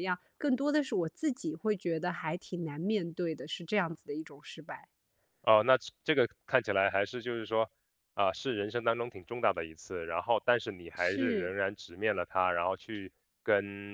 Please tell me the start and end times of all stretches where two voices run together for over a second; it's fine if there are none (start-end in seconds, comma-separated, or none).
none